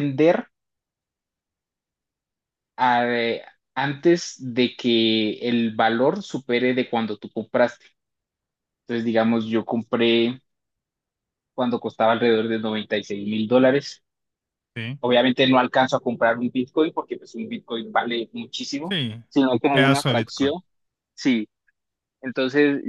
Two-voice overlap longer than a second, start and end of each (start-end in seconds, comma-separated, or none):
18.9-20.5